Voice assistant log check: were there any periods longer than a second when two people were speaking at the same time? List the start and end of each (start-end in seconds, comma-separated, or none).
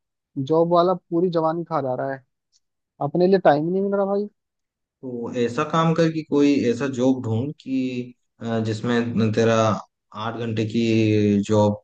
none